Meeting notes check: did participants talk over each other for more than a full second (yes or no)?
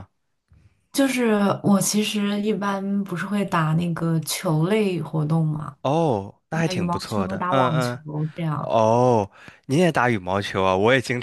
yes